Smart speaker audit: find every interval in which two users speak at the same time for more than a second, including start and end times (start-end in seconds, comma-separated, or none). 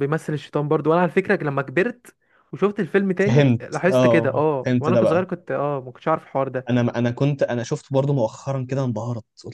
3.2-5.2